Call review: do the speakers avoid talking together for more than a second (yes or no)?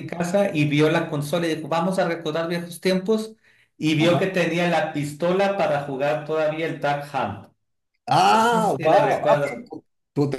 no